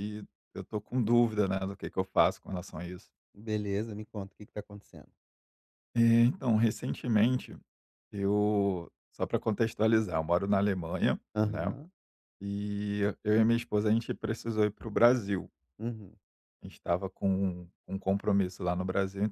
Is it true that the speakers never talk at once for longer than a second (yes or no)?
yes